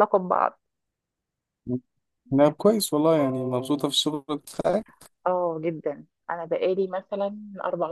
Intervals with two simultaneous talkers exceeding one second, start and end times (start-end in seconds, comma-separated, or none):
none